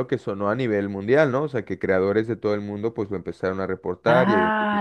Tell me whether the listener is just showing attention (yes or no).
no